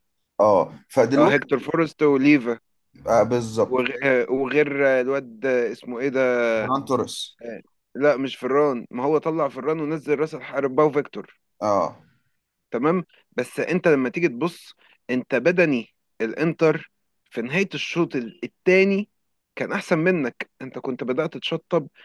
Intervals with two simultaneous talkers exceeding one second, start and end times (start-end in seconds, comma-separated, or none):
none